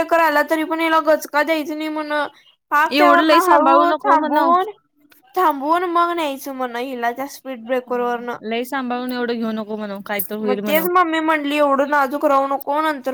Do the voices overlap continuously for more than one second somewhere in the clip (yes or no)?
yes